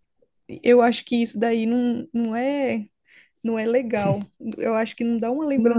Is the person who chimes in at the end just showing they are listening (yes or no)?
no